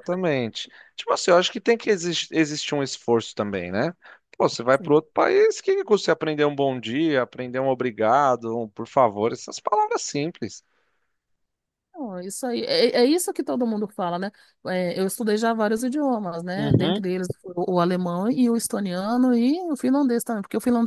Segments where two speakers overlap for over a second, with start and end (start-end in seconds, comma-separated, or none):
none